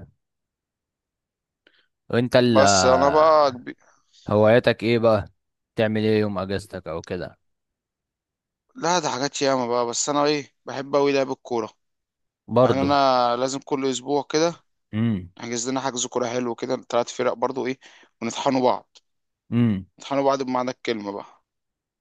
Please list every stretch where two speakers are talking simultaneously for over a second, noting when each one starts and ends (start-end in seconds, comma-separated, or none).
none